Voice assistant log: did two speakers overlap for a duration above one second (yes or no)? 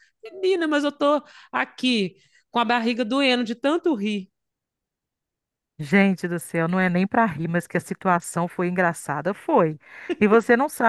no